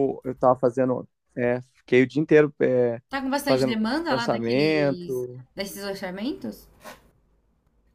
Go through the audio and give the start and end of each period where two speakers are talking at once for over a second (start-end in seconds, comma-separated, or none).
3.4-5.4